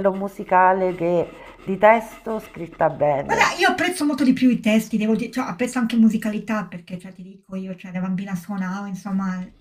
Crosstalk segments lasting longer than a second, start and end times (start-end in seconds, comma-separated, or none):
none